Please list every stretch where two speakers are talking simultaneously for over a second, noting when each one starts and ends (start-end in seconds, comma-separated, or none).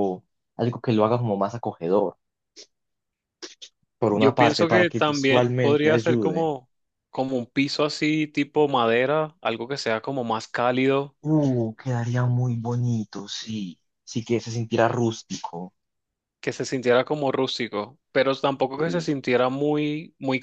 4.1-6.5